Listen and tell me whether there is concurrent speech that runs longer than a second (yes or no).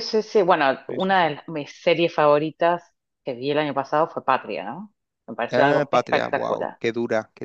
yes